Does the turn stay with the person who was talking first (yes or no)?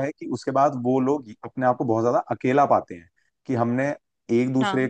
yes